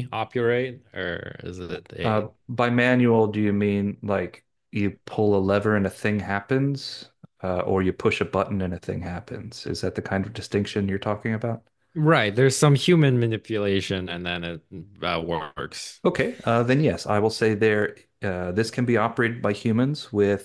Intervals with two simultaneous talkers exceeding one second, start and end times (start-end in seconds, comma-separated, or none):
none